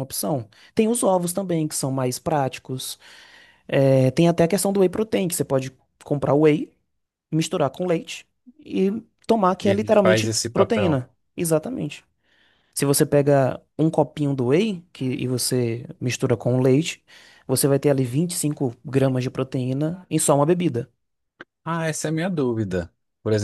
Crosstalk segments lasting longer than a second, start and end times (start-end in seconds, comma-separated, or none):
9.6-11.0